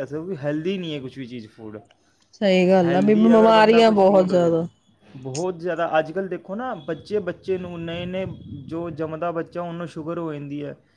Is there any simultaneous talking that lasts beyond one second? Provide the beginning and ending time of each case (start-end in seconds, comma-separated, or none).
2.8-4.5